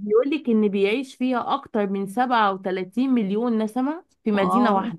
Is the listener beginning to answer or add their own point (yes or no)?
yes